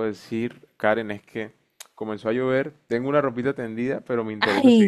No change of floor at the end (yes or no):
yes